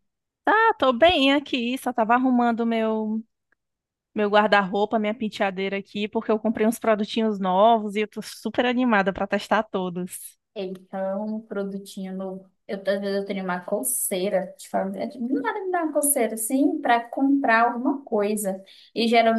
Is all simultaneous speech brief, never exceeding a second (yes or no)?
yes